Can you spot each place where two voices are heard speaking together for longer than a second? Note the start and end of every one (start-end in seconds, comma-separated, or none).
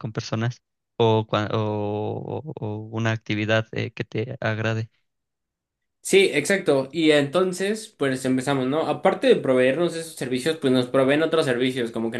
none